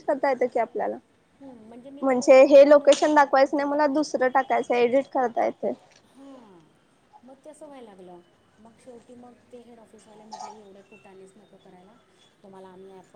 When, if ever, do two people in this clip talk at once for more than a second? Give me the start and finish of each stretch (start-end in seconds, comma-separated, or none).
2.0-4.1